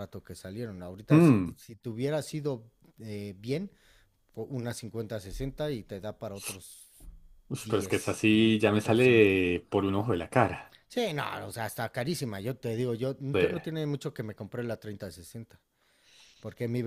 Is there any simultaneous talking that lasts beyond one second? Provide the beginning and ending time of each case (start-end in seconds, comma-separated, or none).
7.6-9.4